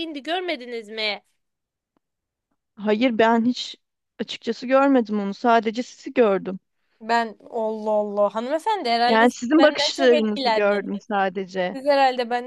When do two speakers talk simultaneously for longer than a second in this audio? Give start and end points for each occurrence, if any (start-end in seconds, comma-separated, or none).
9.1-10.8